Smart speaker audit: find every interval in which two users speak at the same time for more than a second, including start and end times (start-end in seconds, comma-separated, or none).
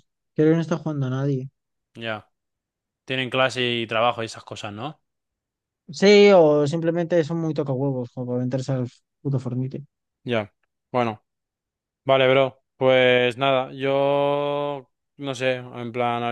none